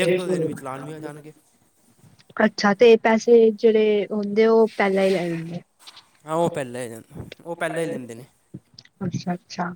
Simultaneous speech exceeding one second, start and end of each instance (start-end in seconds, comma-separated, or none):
none